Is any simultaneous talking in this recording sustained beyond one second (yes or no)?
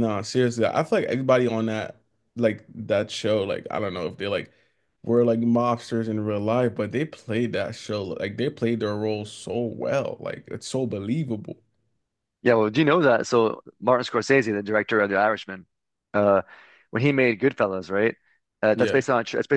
no